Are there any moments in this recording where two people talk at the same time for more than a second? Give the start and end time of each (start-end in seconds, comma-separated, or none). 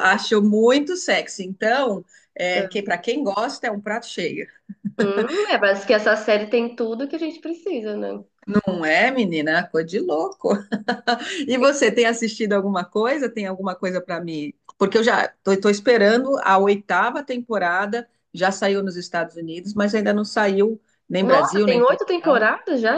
21.2-22.4